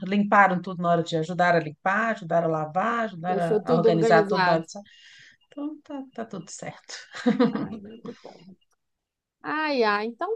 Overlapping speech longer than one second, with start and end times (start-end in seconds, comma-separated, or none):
3.3-4.7